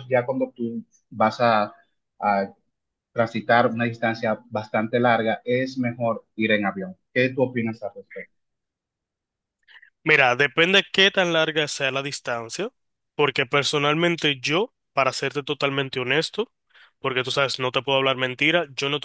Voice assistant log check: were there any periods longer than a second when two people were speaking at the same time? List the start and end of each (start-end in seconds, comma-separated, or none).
none